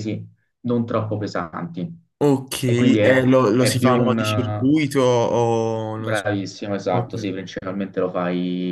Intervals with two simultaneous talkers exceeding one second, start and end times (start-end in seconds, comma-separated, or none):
2.6-4.7